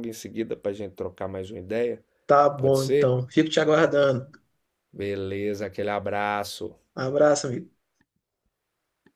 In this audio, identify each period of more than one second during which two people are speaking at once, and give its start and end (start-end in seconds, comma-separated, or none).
none